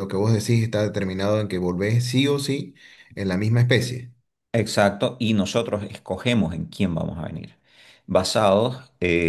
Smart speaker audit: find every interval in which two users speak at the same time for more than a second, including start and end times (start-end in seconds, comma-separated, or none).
none